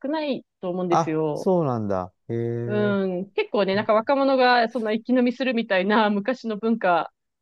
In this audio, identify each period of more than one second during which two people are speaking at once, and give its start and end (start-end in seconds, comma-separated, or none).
none